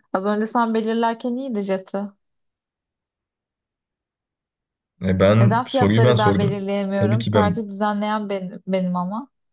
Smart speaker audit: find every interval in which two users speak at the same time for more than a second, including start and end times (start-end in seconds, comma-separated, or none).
5.4-7.6